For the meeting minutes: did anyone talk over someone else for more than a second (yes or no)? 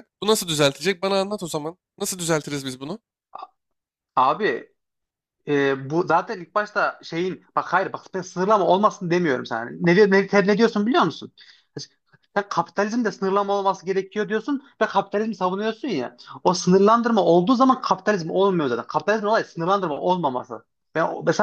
no